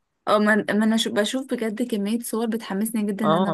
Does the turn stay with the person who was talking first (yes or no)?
no